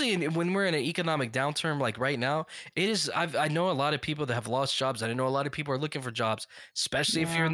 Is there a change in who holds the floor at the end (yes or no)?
no